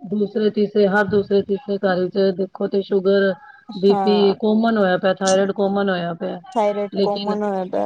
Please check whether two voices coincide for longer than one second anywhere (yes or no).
no